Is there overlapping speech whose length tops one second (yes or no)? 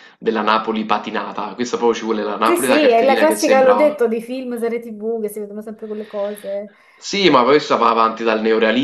yes